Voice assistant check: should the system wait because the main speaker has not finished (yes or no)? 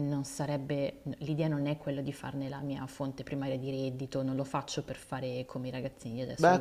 no